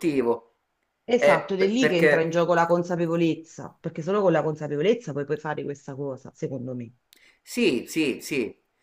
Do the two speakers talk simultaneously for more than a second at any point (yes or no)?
yes